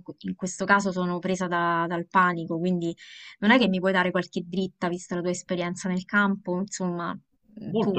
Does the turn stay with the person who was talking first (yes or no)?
yes